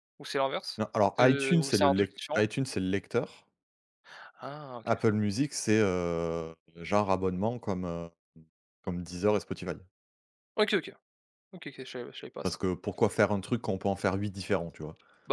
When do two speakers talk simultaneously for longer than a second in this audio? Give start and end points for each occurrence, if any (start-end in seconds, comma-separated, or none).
0.8-2.5